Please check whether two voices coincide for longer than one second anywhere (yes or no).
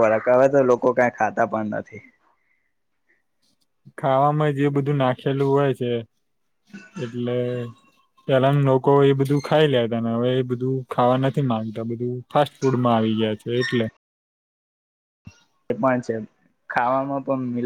no